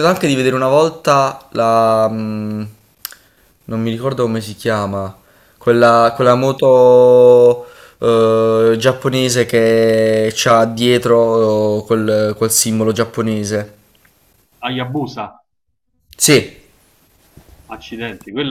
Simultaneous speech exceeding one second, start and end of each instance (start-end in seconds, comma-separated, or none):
none